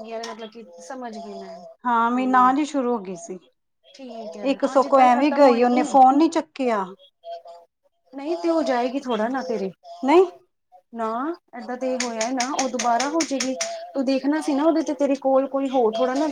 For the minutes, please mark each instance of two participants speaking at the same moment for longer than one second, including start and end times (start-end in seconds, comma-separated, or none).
4.5-5.8